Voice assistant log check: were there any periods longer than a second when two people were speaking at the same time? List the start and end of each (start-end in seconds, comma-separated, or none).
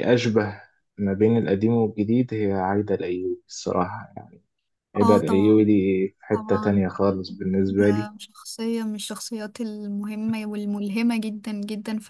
none